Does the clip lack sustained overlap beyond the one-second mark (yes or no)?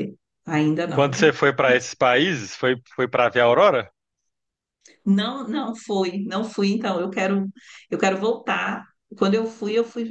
yes